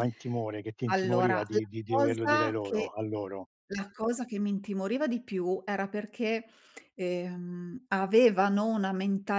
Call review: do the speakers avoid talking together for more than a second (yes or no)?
no